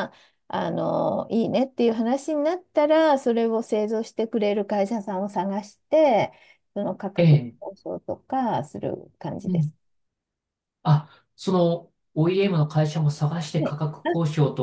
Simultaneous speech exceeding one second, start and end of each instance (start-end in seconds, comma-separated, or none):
none